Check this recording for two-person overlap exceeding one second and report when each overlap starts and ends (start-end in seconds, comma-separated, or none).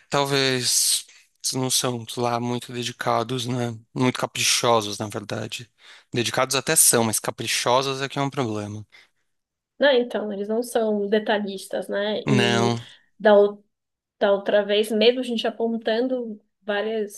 none